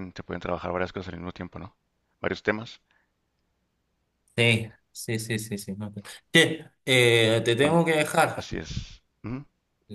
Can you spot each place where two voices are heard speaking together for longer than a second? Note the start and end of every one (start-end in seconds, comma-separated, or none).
none